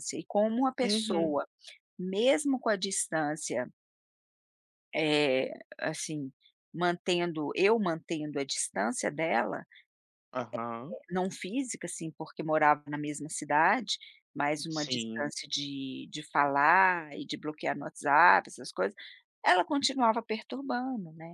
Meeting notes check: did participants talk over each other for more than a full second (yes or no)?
no